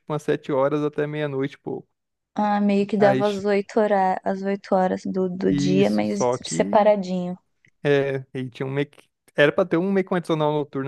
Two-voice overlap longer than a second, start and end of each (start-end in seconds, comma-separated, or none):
5.5-6.9